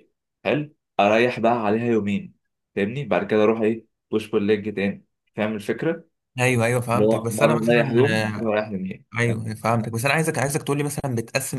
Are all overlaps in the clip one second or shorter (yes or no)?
no